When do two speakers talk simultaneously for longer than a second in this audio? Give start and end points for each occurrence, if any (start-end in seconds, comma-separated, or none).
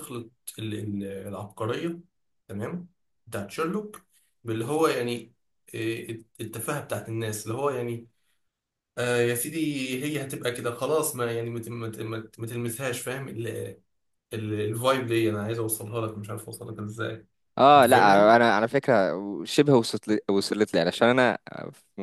none